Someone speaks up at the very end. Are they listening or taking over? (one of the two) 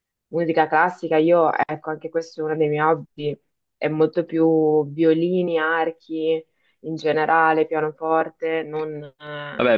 taking over